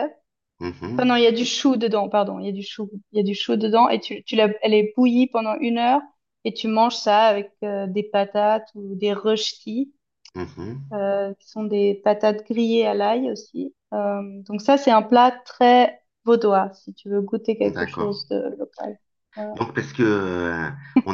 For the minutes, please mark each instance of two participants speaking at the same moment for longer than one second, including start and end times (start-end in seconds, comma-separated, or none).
none